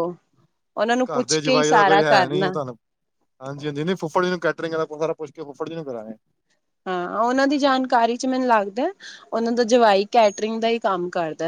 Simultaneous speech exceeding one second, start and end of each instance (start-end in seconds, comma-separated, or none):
1.1-2.5